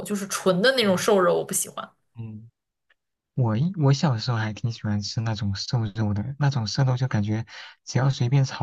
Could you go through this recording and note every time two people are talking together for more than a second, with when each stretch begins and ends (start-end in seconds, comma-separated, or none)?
none